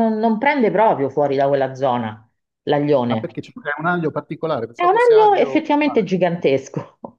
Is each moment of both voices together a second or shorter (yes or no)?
no